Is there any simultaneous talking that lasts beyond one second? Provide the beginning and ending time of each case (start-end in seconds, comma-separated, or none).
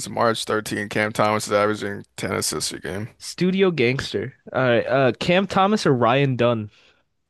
none